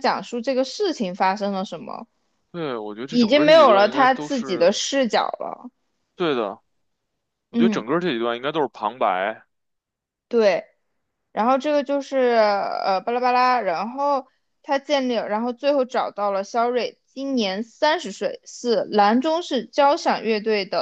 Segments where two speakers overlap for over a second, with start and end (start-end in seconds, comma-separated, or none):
3.1-4.8